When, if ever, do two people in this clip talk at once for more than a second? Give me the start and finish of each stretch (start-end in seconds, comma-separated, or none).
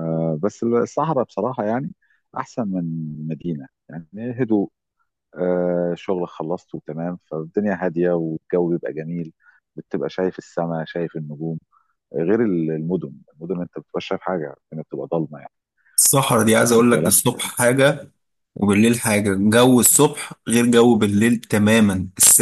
none